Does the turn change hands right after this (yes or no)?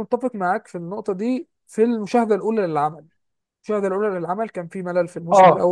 no